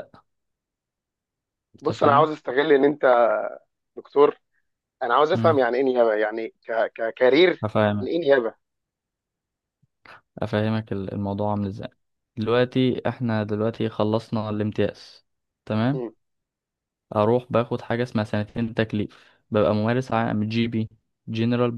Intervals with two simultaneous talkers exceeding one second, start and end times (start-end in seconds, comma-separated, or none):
none